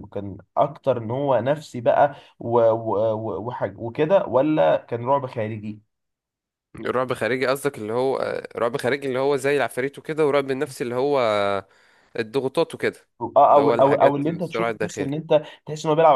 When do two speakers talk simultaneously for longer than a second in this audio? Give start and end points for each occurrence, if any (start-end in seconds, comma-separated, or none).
13.5-15.2